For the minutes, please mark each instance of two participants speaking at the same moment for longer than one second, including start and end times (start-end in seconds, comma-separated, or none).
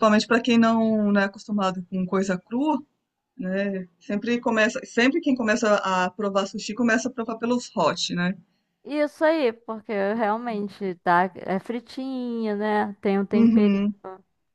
none